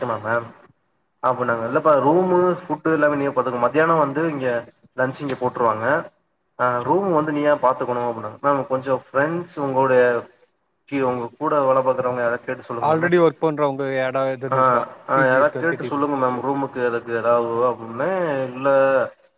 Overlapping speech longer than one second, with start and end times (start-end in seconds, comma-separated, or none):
14.5-16.6